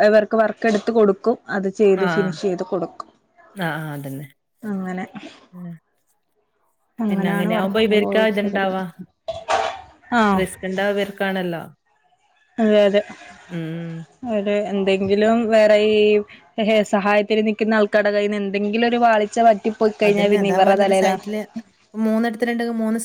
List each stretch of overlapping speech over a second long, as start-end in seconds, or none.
7.1-8.7